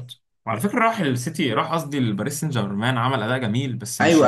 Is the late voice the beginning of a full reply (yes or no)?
yes